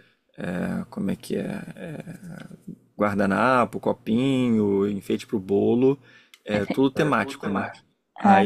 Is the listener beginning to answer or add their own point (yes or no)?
no